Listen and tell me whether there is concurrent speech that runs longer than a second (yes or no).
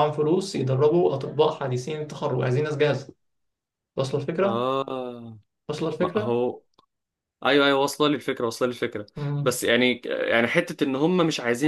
no